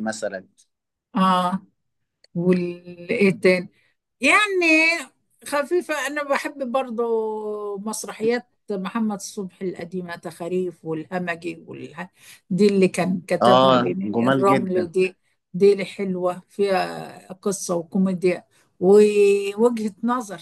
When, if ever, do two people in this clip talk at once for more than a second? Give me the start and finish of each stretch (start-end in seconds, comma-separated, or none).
13.4-14.9